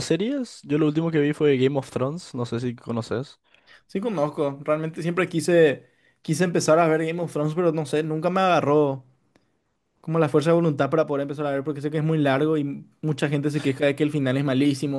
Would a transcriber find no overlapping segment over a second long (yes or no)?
yes